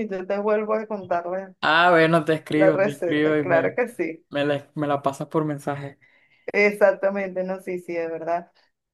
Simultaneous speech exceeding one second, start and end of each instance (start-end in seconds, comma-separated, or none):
2.5-3.8